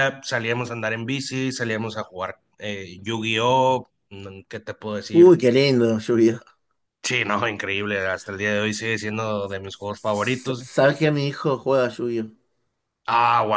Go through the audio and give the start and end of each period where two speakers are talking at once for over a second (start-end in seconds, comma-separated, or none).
none